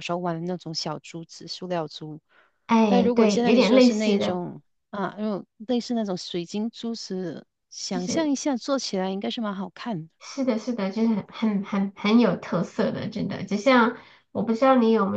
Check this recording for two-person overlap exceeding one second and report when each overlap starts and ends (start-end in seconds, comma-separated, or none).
2.9-4.4